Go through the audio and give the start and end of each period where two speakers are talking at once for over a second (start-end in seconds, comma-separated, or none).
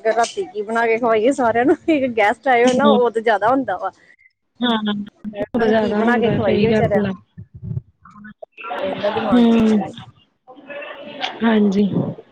5.7-7.1